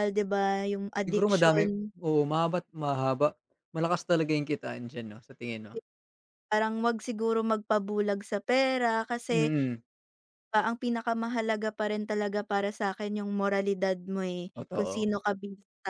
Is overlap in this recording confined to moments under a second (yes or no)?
yes